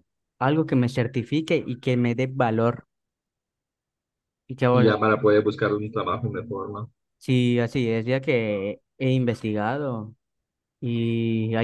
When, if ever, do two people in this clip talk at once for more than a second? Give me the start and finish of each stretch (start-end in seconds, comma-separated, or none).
none